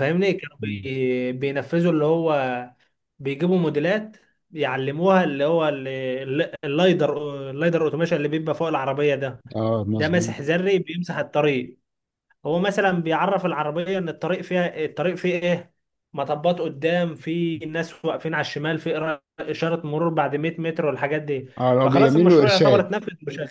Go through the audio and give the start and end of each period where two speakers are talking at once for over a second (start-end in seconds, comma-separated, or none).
21.6-22.9